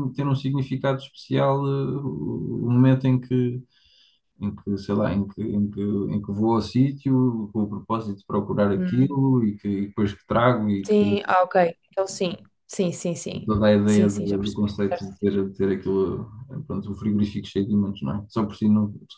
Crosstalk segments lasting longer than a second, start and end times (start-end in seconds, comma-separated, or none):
13.4-15.4